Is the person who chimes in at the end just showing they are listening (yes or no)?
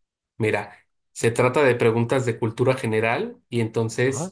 yes